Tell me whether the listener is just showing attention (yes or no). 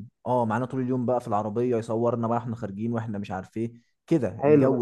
no